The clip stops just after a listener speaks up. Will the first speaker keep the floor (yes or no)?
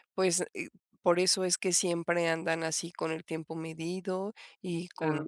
yes